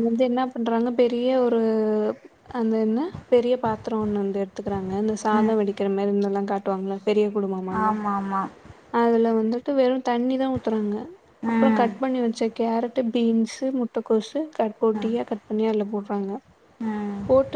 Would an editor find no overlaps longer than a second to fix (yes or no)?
yes